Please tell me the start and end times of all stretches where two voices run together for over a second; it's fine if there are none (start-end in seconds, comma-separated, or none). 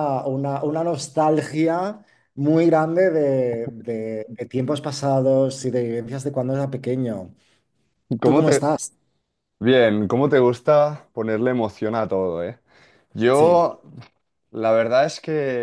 none